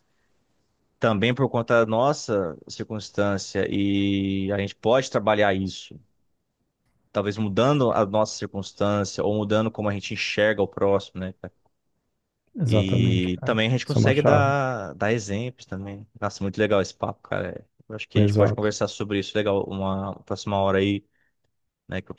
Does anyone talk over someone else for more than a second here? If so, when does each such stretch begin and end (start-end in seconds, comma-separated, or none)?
12.6-14.5